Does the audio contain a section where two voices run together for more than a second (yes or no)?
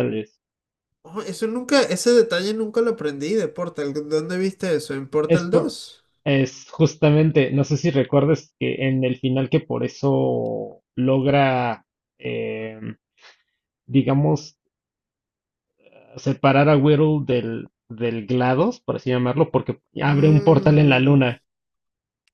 yes